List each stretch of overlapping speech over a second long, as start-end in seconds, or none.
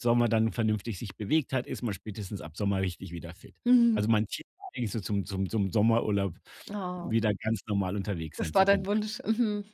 none